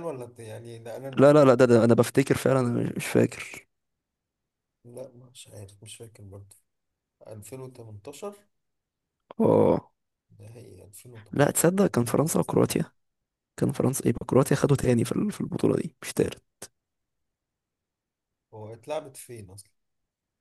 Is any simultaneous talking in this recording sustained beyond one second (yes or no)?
yes